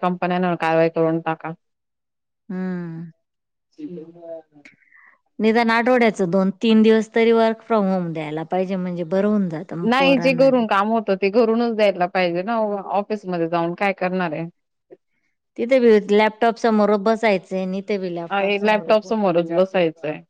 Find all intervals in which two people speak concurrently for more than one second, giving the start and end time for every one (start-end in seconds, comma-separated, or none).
none